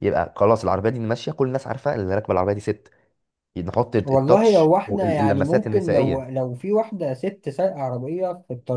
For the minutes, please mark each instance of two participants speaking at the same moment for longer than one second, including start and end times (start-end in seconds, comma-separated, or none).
4.0-6.3